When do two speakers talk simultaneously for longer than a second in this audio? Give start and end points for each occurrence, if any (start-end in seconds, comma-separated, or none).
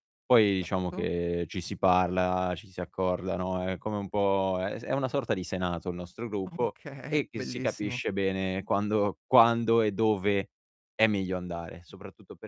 6.5-8.0